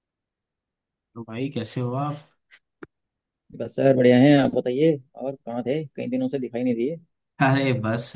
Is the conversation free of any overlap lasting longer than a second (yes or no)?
yes